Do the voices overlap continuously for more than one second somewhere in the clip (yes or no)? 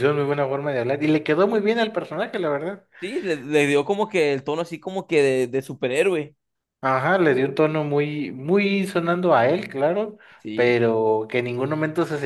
no